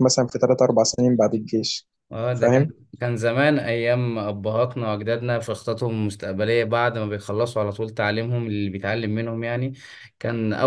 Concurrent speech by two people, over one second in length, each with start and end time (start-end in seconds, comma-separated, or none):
none